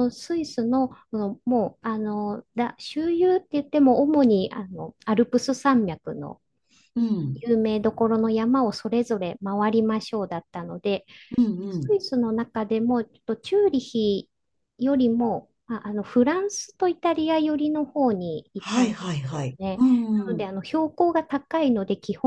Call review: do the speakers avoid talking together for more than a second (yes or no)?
no